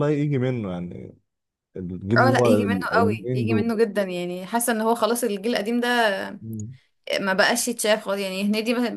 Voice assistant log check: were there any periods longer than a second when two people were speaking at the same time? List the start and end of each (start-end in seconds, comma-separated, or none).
2.2-3.7